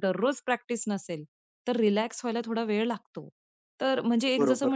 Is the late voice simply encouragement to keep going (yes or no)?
yes